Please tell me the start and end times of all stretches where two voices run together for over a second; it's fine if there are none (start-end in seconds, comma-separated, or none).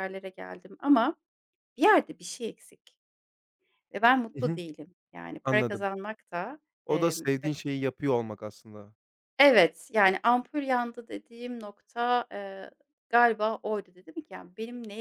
none